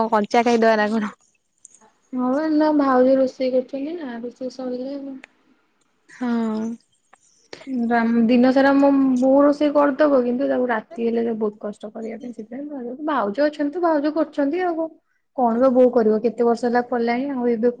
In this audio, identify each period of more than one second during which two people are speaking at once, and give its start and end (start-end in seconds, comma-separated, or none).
none